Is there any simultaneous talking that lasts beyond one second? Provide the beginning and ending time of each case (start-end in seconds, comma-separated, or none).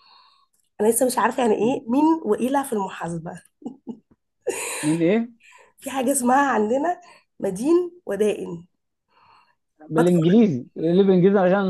none